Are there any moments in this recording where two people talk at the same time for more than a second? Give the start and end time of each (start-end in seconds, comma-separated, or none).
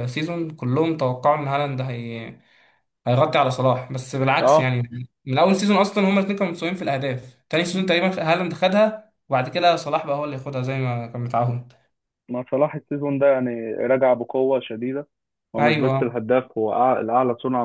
none